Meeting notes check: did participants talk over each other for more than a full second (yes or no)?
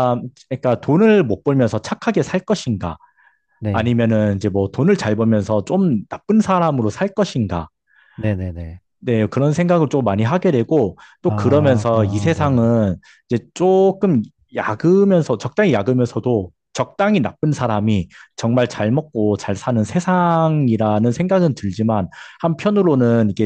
yes